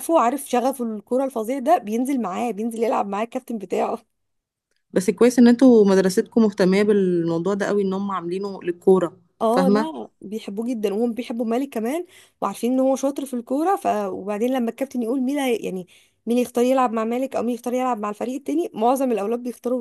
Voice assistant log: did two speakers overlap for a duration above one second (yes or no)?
no